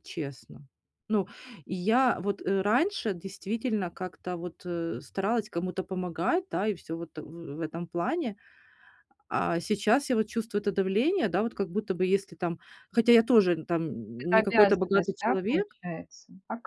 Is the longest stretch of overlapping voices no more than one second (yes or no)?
no